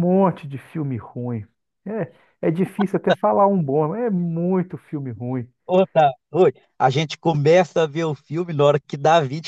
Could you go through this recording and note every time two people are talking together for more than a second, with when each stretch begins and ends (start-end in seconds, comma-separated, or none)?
none